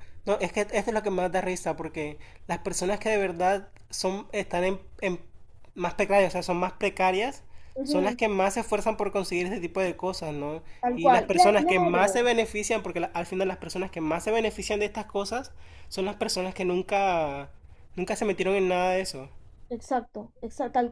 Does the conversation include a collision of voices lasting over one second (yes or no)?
yes